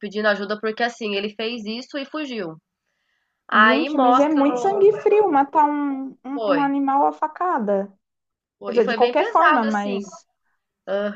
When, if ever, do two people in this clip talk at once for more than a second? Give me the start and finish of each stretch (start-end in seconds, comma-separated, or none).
3.5-4.8, 8.6-10.0